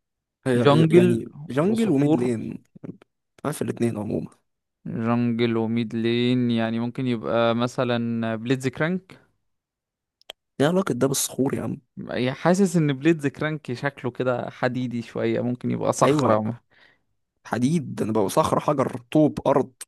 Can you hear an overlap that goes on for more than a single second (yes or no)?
yes